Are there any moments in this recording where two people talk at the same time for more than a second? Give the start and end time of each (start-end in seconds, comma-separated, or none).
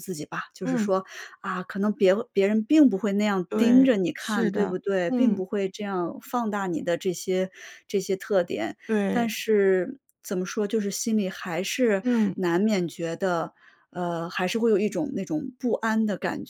3.5-5.4